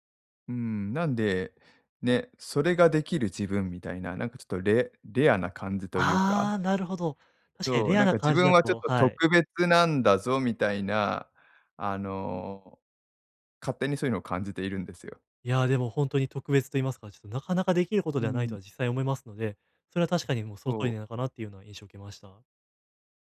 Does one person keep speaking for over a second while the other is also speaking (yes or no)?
yes